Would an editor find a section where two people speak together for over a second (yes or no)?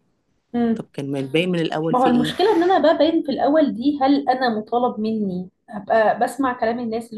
no